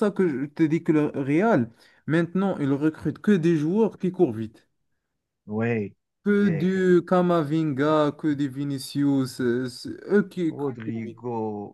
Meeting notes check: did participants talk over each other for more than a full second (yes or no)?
no